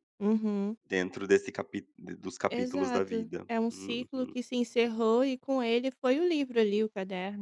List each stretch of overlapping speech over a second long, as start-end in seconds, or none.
2.5-4.1